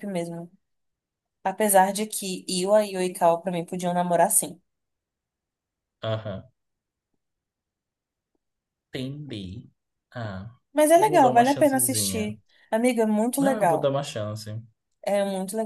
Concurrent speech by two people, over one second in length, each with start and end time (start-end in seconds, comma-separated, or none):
10.9-12.3